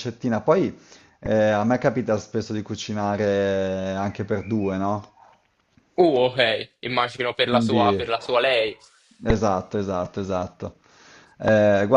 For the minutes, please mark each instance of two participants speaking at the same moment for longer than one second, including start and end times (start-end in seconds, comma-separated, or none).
none